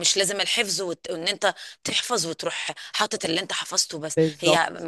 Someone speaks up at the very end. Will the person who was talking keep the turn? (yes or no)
yes